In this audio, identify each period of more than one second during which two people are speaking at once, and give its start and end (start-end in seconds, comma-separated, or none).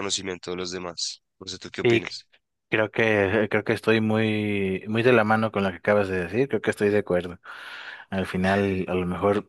none